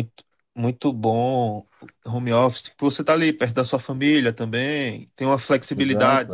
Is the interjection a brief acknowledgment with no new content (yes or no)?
yes